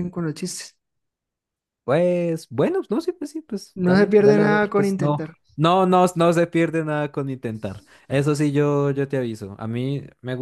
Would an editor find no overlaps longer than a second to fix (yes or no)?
no